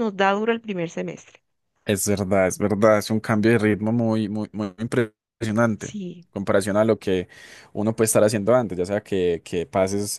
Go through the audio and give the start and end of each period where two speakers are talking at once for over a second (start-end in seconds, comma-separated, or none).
none